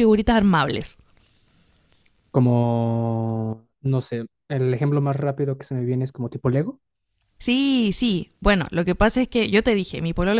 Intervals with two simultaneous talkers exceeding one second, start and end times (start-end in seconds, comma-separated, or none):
none